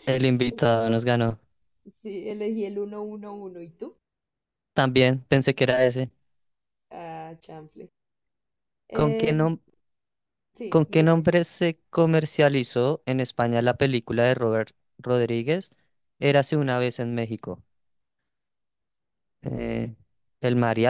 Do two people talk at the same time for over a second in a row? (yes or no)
no